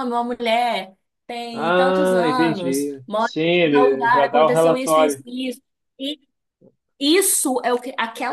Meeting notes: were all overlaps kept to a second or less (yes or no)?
no